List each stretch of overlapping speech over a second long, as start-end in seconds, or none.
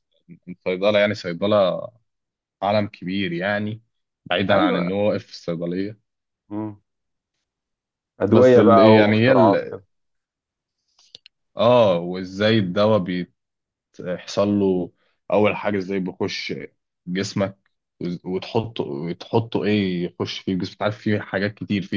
8.3-9.8